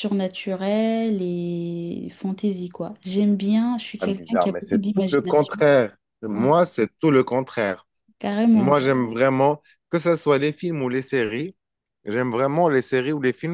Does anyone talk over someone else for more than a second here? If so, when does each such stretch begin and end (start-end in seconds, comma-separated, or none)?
4.0-5.6